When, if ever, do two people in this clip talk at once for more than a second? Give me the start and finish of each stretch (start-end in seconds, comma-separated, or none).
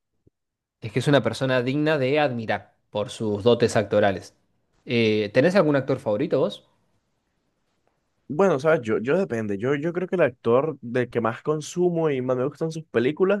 none